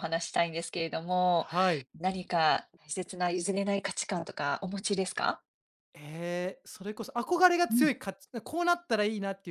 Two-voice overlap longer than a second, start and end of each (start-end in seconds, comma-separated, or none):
none